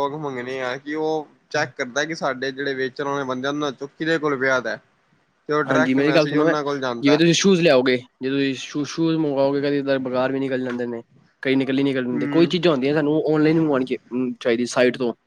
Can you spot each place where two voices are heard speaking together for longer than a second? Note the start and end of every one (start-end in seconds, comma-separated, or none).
none